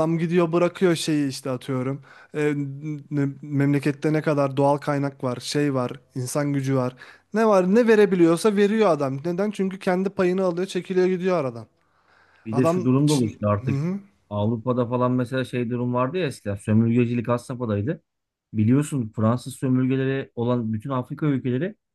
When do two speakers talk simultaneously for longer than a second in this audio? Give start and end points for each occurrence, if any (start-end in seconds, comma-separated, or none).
12.5-13.8